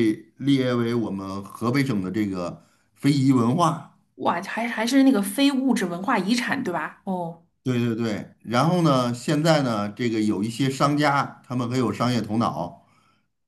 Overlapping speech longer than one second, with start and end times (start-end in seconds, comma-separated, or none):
none